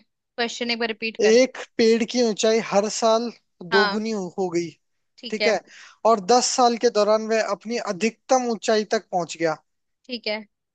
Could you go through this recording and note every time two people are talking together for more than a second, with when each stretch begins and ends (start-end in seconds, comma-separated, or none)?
none